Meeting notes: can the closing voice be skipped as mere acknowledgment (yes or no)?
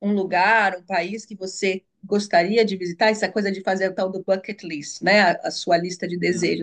yes